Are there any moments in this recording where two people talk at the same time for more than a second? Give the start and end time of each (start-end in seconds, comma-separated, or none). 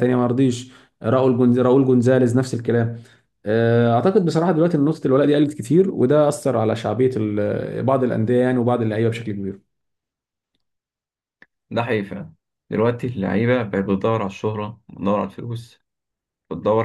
none